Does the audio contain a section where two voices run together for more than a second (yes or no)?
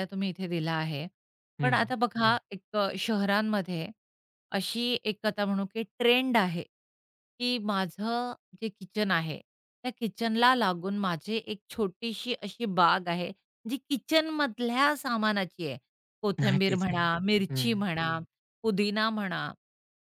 yes